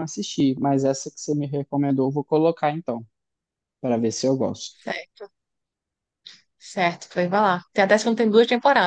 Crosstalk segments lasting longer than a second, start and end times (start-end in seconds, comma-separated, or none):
none